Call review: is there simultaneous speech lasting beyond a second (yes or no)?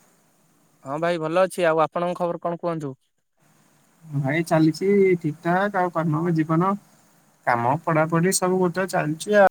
no